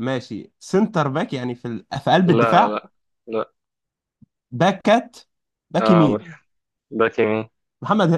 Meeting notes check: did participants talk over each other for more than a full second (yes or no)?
no